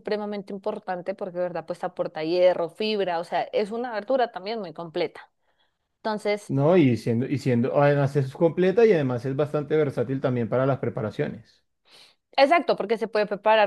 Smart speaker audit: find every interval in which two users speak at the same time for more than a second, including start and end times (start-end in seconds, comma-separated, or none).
none